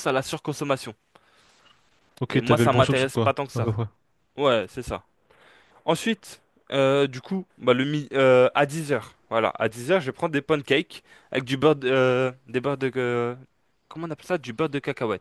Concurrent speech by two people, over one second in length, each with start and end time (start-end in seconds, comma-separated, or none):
2.3-3.7